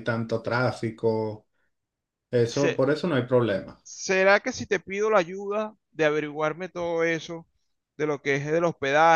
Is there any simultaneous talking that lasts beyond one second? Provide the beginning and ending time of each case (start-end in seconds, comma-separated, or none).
none